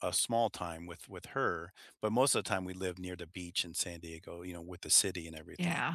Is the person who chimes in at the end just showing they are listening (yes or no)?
no